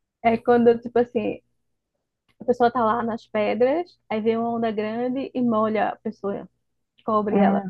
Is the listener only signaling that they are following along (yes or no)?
yes